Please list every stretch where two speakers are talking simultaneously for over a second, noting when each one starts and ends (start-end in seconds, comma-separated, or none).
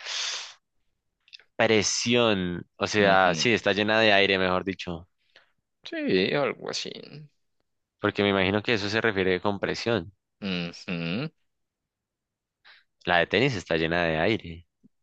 none